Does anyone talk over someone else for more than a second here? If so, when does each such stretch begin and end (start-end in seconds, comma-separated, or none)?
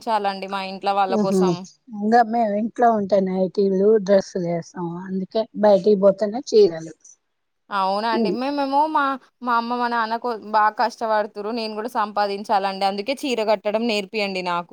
none